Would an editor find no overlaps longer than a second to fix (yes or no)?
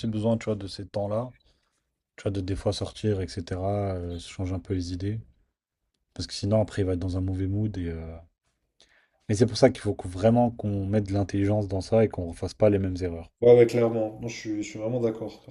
yes